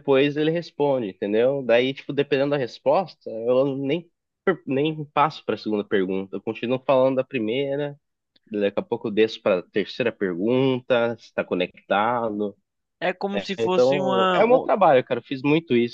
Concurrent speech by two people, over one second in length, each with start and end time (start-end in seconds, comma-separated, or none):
13.3-14.7